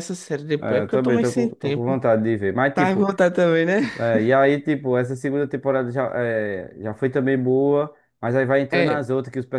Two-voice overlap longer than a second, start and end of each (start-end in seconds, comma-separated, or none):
0.6-2.0